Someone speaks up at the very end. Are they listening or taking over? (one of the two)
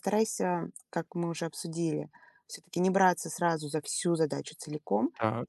listening